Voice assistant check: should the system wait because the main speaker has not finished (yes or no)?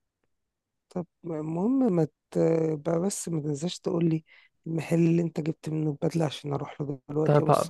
no